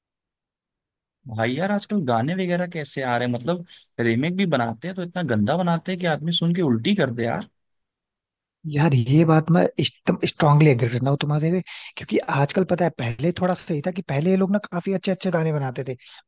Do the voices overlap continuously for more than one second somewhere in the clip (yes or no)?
no